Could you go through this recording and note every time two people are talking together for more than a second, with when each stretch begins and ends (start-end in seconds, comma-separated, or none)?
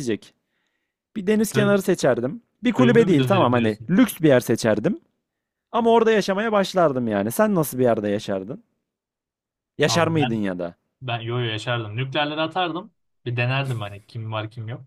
2.7-3.9